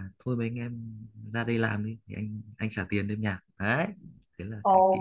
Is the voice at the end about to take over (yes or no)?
yes